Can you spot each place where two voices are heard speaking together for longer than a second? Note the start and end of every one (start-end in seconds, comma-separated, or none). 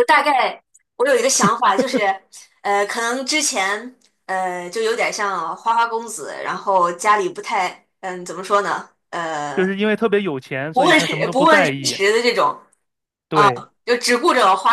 10.7-12.0